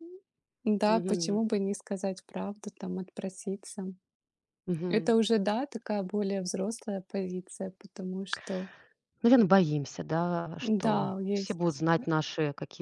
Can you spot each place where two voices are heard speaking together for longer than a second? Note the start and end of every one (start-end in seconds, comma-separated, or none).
10.6-11.8